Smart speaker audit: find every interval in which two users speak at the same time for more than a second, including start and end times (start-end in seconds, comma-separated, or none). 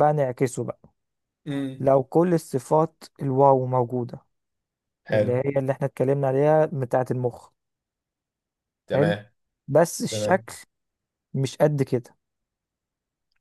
none